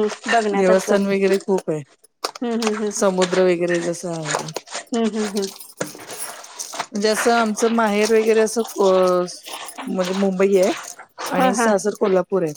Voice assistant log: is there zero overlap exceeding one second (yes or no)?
yes